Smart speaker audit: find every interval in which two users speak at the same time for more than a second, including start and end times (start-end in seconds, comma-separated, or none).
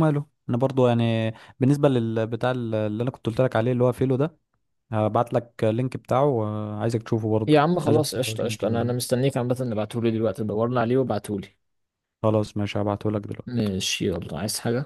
7.5-8.9